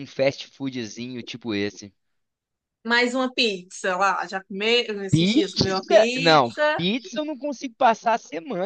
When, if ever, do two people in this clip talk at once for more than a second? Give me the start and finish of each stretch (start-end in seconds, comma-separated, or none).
5.1-6.8